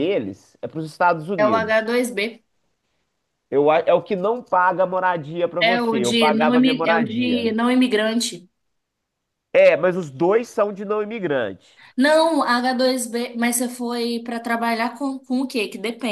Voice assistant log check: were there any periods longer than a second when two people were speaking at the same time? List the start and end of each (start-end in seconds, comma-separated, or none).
5.6-7.5